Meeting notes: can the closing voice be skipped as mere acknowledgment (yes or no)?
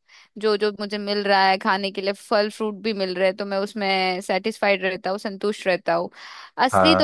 yes